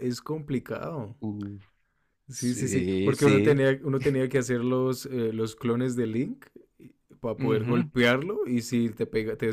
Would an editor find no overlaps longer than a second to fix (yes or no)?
no